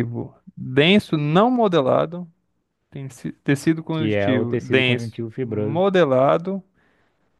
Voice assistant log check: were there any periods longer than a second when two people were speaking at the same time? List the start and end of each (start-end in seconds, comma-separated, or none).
3.9-5.8